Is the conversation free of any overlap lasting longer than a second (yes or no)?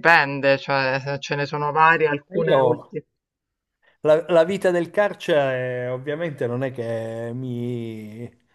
yes